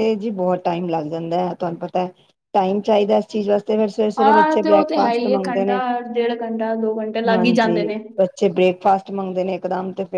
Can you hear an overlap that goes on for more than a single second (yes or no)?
yes